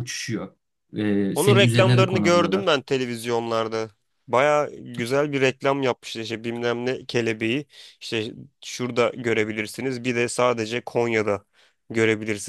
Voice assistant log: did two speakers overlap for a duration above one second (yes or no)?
yes